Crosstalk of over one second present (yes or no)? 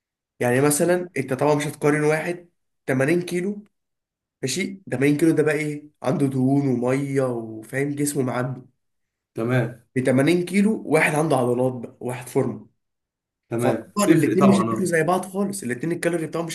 yes